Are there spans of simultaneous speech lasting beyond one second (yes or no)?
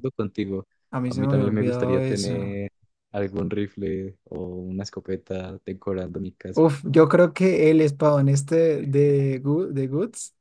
yes